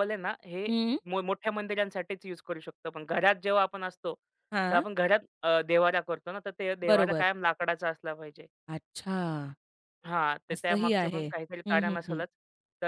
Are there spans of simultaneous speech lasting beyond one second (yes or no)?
yes